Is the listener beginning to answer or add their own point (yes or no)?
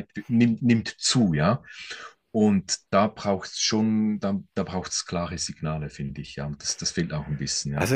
yes